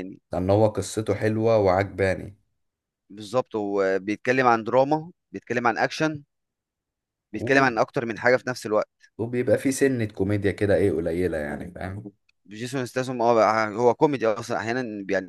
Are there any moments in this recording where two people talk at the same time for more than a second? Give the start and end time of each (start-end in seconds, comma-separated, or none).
none